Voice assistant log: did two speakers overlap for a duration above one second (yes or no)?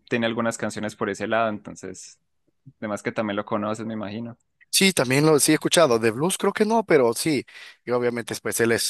no